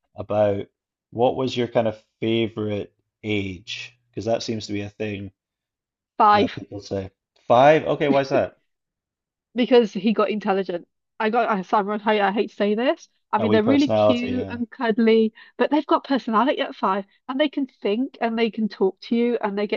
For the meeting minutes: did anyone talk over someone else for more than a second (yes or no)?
yes